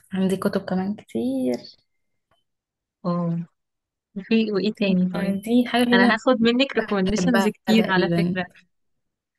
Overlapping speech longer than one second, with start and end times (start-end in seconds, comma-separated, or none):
7.2-8.4